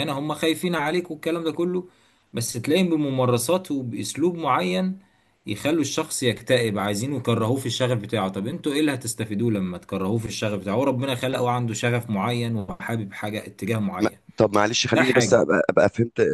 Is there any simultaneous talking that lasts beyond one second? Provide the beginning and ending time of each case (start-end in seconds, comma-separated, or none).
none